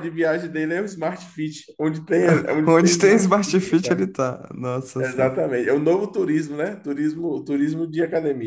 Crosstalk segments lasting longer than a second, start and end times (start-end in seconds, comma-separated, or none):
2.6-4.1